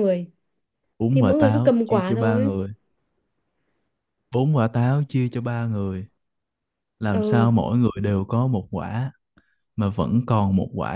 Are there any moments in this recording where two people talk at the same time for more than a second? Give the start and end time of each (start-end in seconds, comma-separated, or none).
1.1-2.5